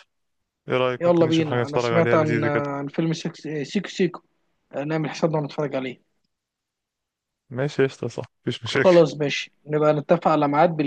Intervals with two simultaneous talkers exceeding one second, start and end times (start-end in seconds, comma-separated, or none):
1.0-2.6